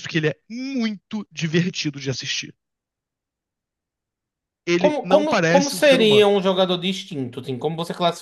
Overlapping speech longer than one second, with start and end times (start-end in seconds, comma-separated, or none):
4.8-6.3